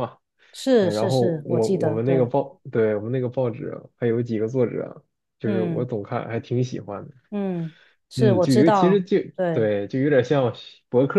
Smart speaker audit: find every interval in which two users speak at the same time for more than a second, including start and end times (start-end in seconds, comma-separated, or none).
0.8-2.3, 8.1-9.7